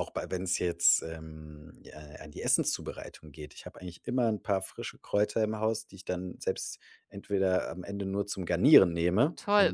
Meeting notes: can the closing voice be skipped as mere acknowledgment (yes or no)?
no